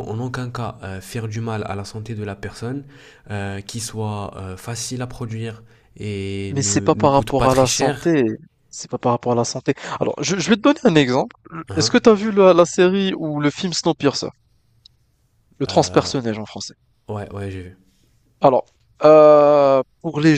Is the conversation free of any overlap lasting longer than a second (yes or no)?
no